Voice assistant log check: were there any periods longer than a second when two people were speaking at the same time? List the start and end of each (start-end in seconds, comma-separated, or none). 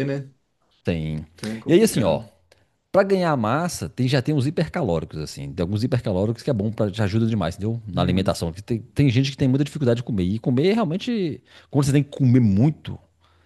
none